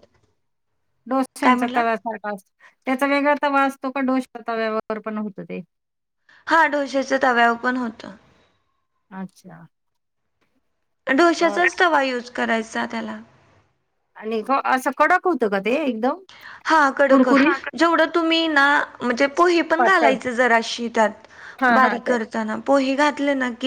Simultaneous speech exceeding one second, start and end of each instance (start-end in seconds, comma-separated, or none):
none